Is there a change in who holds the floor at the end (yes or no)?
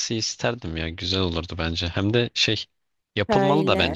no